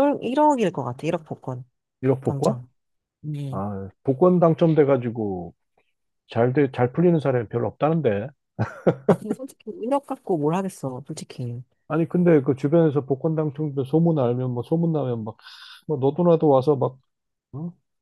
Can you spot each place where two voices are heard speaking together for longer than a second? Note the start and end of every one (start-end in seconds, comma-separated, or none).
none